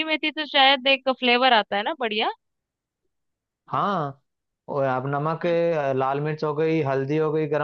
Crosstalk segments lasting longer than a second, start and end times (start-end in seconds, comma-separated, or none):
none